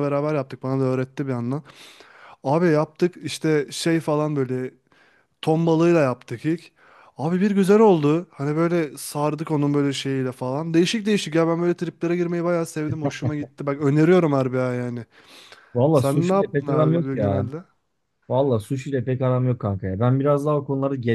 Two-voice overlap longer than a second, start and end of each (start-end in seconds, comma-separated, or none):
15.9-17.4